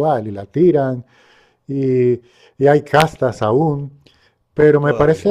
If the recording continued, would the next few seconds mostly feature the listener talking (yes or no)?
no